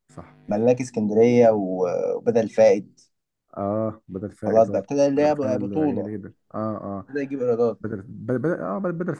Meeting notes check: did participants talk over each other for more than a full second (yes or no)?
yes